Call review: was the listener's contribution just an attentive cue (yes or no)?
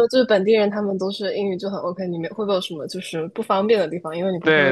no